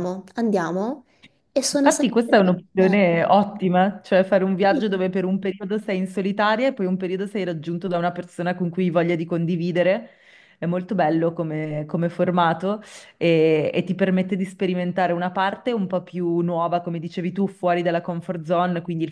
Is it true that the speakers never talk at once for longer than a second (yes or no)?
yes